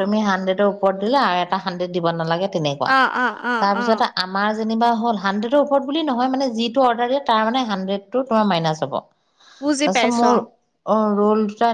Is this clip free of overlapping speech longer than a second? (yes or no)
yes